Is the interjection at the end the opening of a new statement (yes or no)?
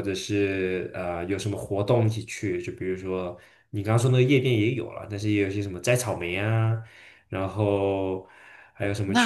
yes